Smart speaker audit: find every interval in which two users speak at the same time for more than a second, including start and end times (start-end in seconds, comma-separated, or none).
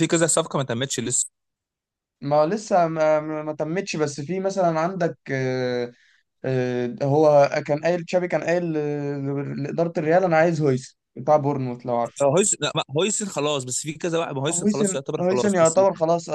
14.5-15.8